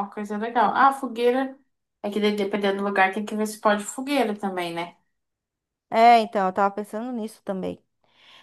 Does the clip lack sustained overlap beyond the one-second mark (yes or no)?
yes